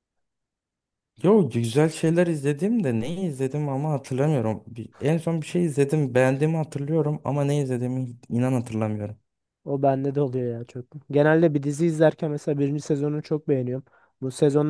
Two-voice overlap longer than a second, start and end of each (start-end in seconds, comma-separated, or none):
none